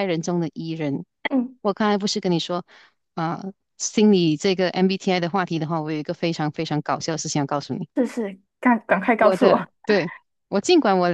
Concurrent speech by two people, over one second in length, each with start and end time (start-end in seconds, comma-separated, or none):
none